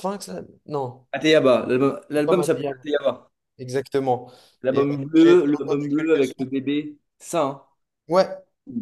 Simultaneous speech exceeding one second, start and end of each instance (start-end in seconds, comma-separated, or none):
4.7-6.5